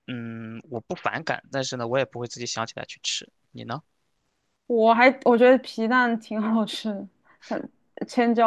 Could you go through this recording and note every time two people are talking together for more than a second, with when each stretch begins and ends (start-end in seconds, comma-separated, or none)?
none